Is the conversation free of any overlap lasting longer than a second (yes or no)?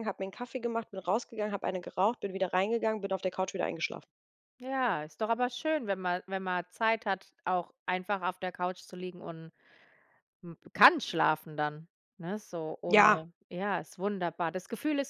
yes